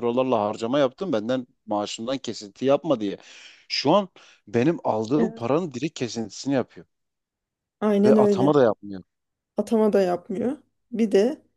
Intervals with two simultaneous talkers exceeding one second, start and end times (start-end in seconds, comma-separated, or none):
none